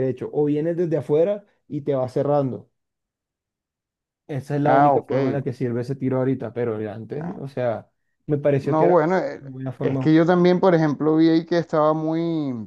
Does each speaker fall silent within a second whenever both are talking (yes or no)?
yes